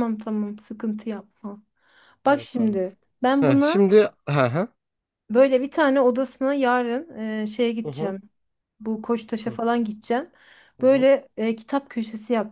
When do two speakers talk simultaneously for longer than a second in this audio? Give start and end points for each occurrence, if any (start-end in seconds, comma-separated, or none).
none